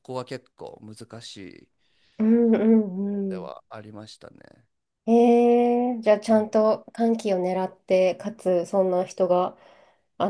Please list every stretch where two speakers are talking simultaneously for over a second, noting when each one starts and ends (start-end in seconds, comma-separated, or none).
none